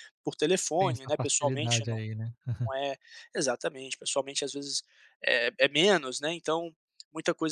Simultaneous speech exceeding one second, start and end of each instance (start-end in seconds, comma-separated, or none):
0.8-2.0